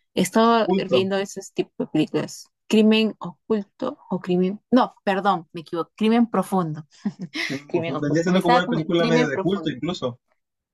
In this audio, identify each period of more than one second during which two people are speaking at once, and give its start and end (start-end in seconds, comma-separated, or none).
7.7-9.8